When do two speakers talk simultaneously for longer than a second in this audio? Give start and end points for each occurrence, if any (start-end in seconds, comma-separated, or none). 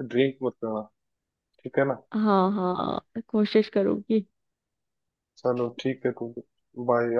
none